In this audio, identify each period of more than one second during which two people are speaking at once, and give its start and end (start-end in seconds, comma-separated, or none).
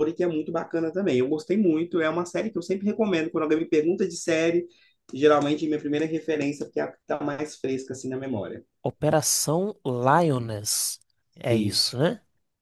none